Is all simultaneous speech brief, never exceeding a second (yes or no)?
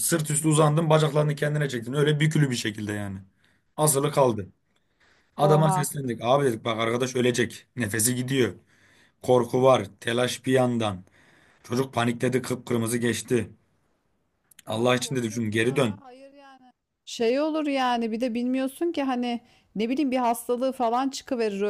no